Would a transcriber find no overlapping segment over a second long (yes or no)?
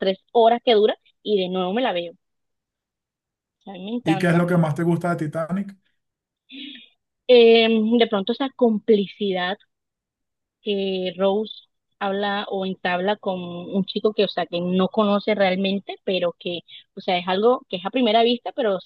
yes